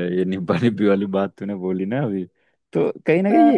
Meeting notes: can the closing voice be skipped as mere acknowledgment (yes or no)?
yes